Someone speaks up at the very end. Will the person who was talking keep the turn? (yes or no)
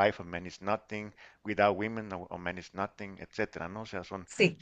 yes